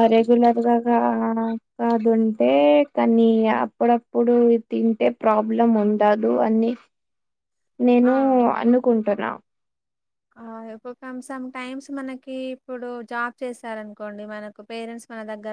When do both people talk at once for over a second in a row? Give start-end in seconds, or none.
none